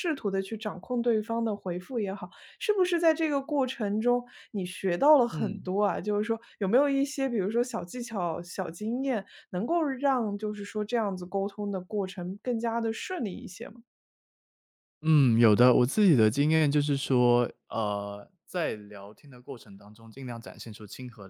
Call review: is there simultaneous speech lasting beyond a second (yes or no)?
no